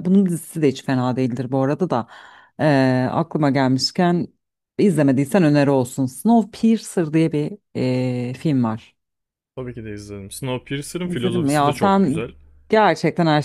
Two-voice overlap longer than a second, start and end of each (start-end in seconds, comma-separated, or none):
11.1-12.2